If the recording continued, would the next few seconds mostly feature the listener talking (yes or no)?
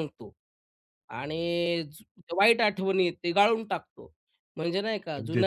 no